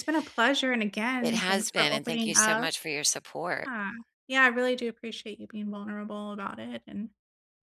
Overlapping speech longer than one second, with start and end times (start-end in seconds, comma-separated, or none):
1.2-2.7